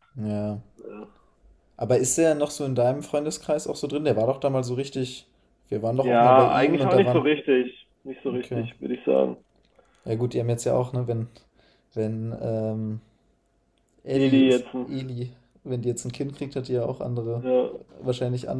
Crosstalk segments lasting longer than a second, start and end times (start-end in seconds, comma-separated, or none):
6.0-7.3